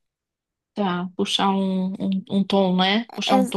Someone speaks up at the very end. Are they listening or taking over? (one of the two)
listening